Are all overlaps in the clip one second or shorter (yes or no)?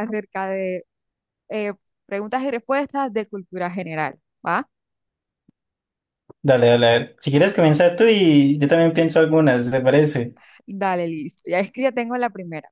yes